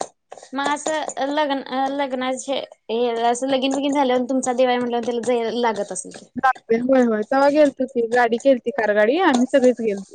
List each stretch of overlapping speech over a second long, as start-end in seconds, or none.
none